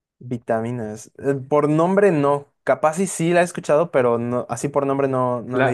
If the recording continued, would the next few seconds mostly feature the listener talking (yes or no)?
yes